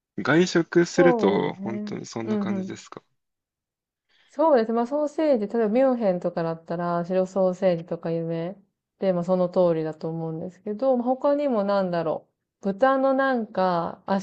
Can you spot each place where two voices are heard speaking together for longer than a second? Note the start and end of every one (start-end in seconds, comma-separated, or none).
0.9-2.9